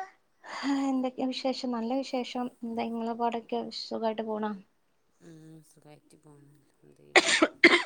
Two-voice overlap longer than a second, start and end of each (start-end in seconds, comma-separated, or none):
none